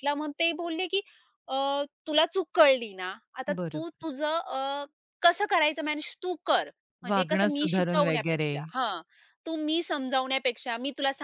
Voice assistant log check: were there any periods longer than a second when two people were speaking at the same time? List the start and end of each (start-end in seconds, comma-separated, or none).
7.1-8.5